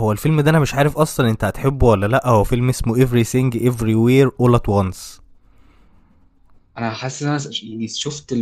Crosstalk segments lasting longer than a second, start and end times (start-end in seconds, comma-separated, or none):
none